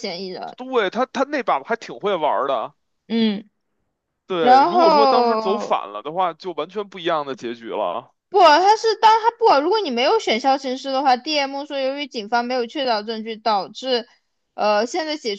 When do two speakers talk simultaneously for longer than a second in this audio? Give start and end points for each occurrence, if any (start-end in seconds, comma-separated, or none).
4.4-5.8